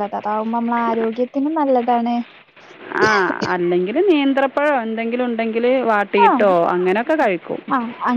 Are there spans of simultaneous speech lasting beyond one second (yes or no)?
no